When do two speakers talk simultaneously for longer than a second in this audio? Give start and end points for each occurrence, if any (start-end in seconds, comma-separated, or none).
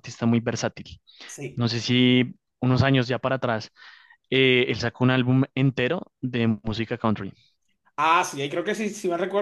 none